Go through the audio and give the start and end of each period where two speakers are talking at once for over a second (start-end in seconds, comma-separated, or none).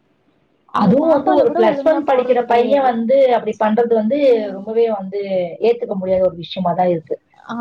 0.8-2.9